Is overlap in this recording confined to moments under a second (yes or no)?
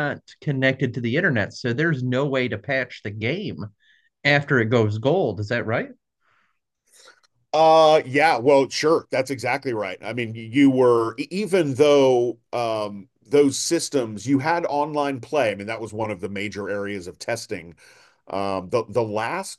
yes